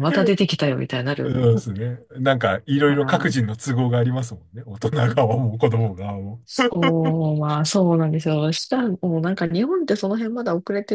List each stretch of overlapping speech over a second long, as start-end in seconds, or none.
none